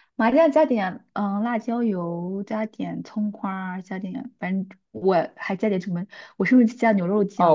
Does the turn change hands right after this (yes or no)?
yes